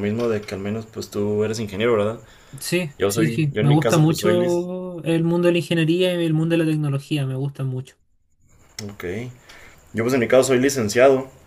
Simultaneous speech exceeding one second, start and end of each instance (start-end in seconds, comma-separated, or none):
3.0-4.5